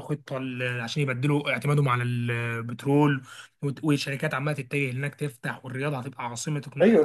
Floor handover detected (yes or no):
yes